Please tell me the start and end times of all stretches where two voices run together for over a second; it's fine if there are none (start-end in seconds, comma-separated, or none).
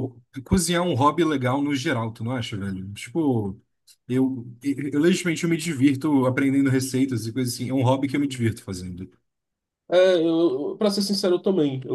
none